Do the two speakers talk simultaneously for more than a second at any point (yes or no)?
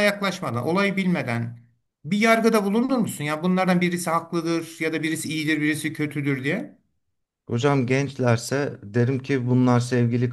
no